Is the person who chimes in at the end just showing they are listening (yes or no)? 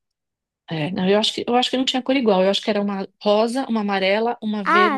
no